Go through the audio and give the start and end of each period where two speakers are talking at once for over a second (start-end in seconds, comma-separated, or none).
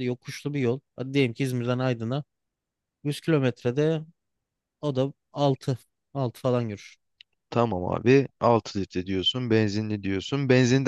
none